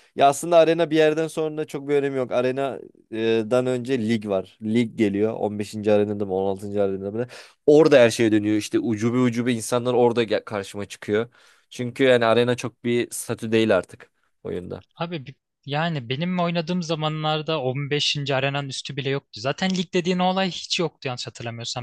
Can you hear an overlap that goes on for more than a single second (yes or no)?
no